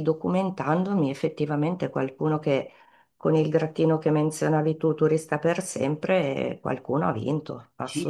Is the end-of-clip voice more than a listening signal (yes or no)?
yes